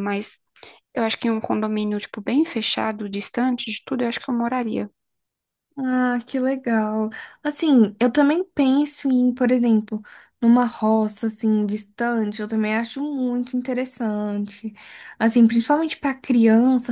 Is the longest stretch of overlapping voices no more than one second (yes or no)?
yes